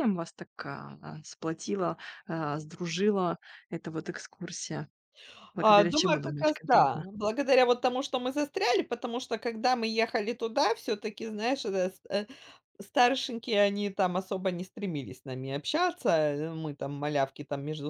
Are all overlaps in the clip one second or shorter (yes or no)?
no